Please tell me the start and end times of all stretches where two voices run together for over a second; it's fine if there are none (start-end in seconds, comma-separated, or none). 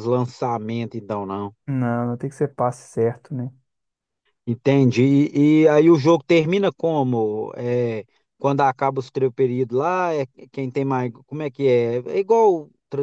none